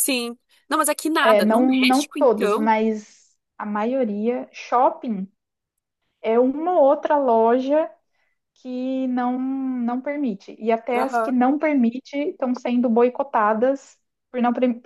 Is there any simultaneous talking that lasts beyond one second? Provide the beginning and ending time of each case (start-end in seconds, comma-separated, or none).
1.2-2.7